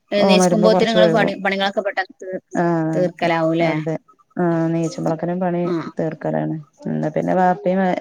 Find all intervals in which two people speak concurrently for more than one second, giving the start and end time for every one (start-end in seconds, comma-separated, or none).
none